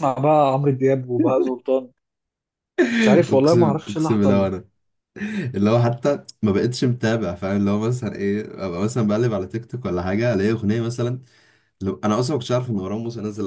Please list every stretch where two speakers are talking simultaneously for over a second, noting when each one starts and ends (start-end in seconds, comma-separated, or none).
3.3-4.5